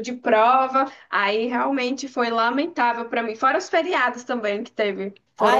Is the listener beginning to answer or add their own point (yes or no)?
yes